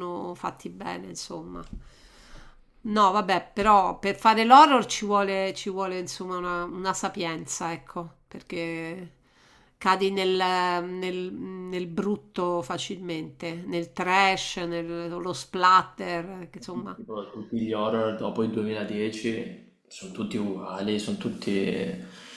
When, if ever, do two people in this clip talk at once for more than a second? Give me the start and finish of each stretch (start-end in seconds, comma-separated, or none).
none